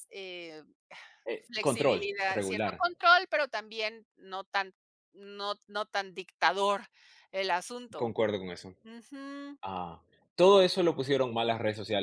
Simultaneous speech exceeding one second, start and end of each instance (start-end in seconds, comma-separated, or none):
1.4-2.9